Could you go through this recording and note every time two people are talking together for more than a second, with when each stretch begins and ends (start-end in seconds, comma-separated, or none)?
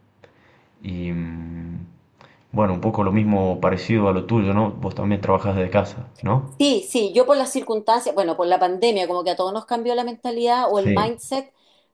none